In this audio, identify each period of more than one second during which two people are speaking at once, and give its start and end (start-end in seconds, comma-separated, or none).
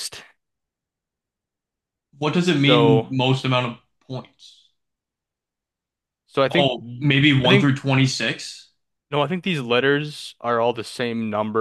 none